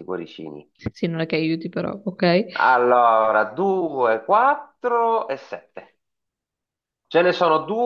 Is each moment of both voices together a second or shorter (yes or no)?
yes